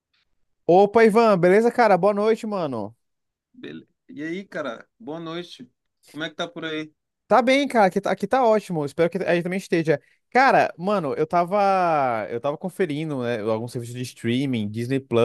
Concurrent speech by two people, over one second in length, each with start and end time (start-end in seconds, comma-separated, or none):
none